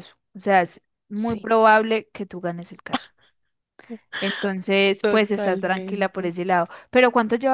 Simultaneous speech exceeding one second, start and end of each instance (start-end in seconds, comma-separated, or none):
5.0-6.3